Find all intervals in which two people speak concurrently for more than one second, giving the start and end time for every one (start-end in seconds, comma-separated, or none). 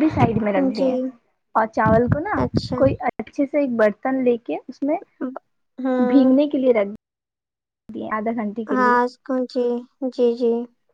none